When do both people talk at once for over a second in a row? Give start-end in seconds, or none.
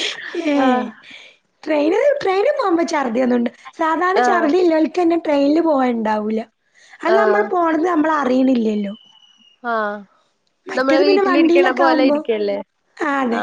10.8-12.2